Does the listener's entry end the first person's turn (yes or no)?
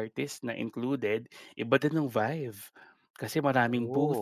no